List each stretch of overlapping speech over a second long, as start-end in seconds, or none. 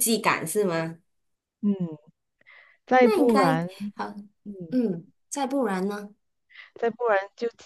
none